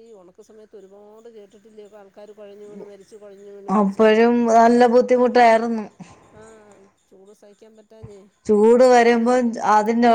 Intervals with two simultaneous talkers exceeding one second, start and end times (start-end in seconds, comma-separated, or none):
none